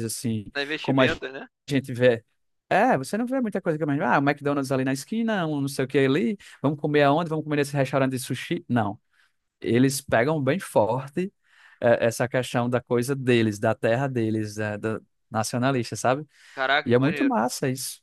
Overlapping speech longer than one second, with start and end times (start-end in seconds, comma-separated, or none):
none